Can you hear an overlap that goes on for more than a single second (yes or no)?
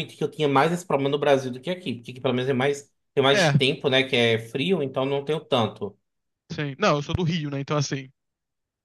no